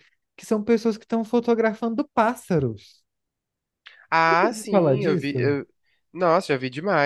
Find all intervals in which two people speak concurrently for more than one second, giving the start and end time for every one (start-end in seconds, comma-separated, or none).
4.2-5.5